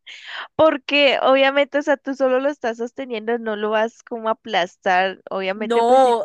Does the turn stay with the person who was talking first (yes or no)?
no